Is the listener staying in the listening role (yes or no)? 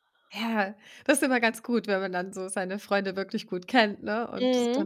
yes